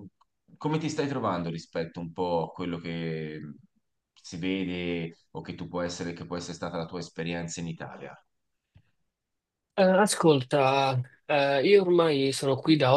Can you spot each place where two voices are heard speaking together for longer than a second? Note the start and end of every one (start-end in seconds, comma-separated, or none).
none